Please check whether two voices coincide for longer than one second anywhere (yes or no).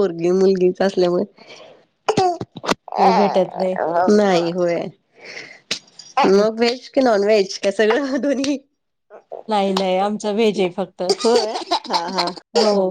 no